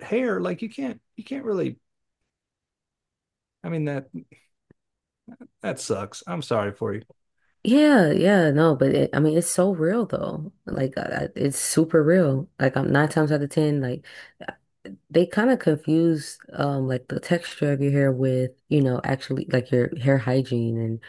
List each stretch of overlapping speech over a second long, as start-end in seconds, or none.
none